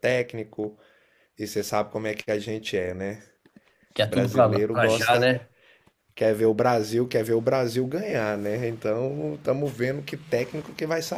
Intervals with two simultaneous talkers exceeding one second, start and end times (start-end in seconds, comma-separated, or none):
4.0-5.3